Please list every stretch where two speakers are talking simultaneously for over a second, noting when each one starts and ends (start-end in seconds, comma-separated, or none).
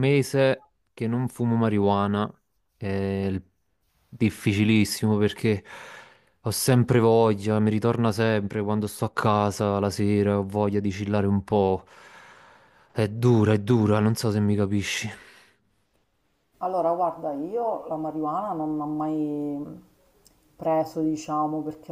none